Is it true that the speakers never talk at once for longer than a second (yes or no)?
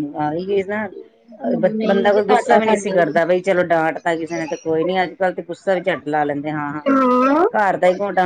no